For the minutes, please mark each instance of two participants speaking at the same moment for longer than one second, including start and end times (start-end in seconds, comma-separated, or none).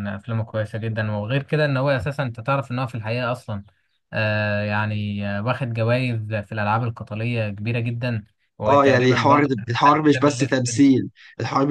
8.7-10.8